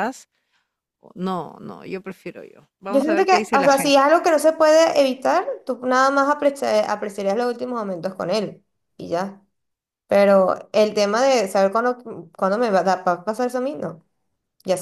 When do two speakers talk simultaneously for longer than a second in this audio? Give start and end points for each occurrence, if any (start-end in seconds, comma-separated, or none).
2.9-4.2